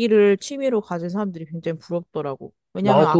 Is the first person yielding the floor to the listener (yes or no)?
no